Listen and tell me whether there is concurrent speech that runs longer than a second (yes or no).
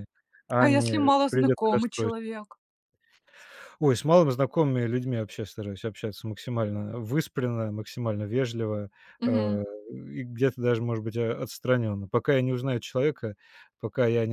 yes